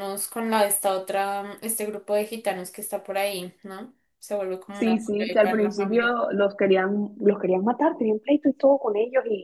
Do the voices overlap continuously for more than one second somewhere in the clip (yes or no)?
yes